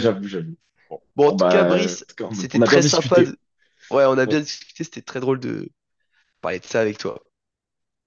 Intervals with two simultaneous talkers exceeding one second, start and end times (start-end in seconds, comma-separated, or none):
1.1-3.3